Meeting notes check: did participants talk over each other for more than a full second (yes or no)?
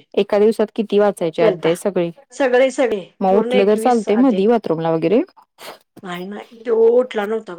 yes